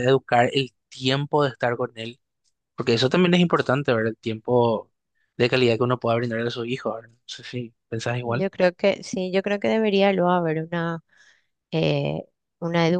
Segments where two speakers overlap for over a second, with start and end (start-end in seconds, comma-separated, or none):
none